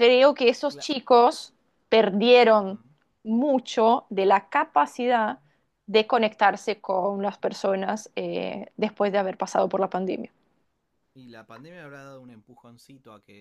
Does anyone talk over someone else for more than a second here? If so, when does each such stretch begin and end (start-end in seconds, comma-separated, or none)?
none